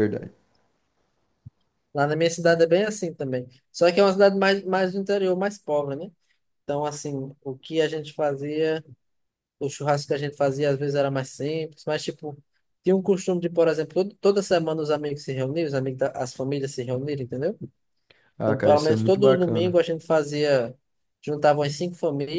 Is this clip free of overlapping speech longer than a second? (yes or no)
no